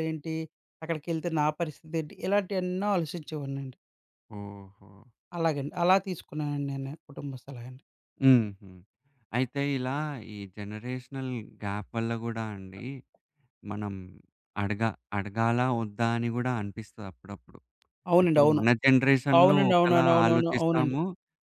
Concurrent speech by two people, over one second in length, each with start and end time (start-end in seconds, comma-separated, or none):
19.4-21.0